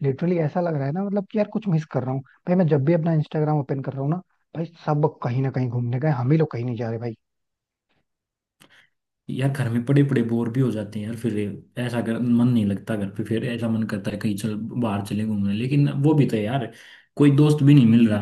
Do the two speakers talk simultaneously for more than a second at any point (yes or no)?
no